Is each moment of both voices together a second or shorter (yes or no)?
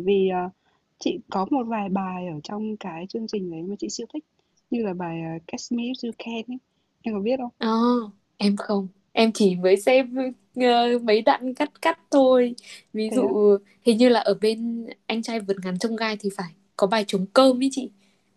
yes